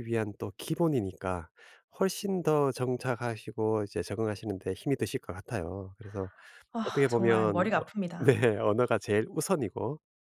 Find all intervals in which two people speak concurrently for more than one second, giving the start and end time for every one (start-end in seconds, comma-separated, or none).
6.8-8.3